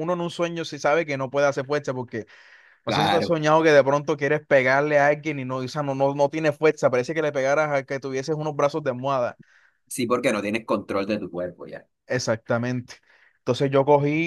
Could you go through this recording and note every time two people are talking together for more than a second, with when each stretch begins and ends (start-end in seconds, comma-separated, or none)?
none